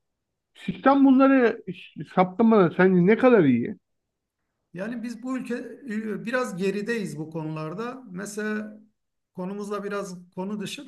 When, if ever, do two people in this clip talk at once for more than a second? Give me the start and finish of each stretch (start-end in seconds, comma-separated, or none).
none